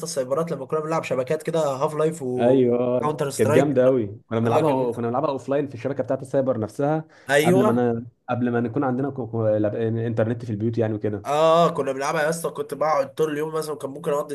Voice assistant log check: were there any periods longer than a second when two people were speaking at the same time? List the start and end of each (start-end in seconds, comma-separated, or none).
2.4-3.7